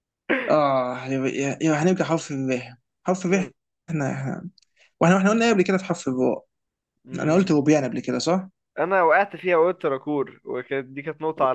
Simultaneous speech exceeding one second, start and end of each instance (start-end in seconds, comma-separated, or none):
none